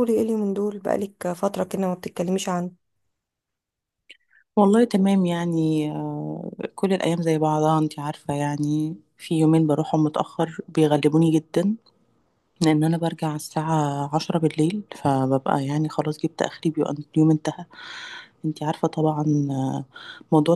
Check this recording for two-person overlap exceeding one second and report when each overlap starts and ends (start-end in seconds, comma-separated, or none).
none